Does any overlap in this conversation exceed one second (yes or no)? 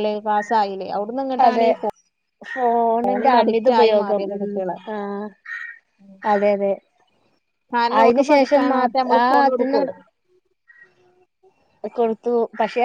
yes